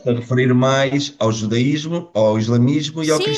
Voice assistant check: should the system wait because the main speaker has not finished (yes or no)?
no